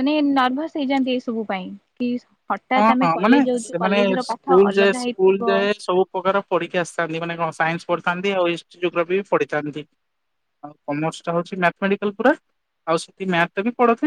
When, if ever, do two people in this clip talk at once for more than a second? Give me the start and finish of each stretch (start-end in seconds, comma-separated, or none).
2.8-5.4